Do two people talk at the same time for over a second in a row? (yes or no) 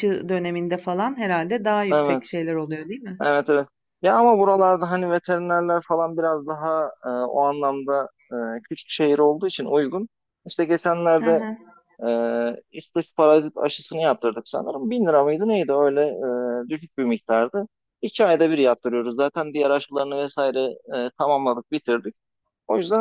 no